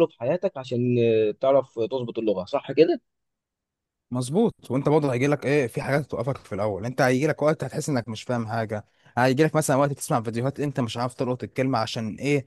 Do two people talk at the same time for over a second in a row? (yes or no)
no